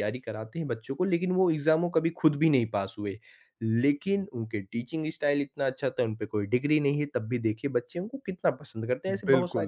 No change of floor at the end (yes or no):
no